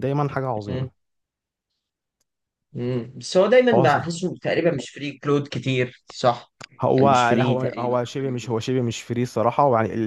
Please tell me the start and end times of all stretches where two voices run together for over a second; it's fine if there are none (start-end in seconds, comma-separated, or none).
7.0-8.6